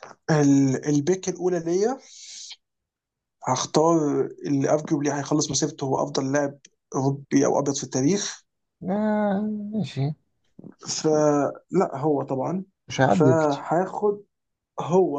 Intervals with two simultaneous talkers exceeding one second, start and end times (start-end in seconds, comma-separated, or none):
none